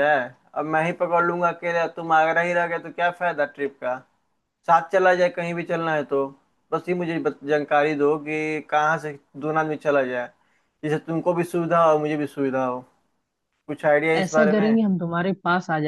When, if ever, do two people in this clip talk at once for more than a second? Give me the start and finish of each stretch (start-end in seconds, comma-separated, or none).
none